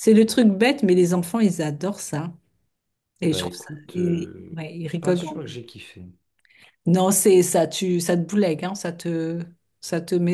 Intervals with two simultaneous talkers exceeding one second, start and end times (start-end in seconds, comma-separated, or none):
3.3-5.4